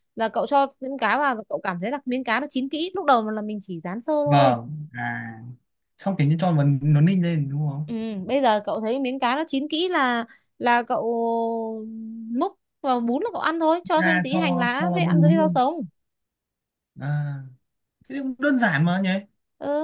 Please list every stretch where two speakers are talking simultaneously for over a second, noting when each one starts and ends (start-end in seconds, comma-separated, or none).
14.0-15.6